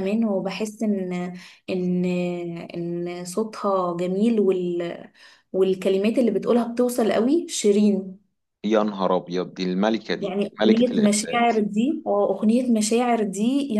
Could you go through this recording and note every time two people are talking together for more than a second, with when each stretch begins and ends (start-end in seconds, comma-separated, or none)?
10.2-11.6